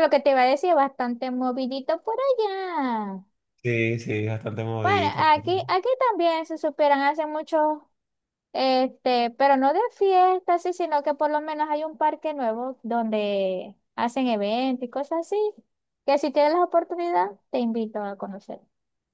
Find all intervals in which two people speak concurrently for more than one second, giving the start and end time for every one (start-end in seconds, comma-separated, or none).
none